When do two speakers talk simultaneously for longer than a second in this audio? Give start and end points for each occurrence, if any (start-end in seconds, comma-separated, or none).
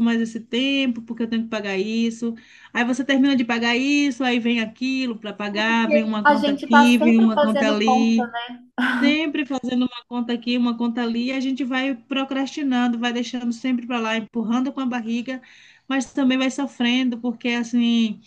5.7-8.2